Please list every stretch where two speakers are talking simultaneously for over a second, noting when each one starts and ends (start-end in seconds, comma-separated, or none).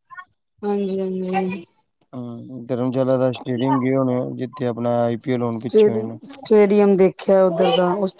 none